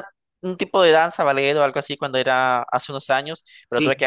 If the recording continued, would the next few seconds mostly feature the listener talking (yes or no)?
no